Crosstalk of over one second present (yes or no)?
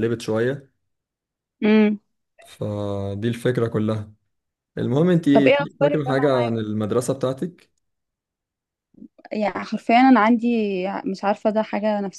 yes